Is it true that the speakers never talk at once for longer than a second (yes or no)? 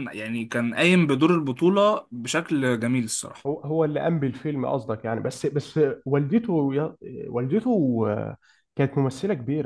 yes